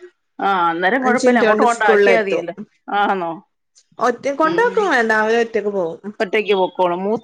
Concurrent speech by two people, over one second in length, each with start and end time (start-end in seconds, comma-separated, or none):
1.1-2.5